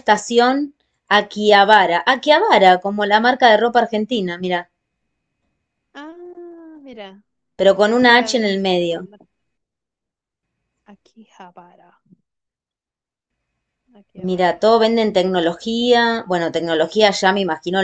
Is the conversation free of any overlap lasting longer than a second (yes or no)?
no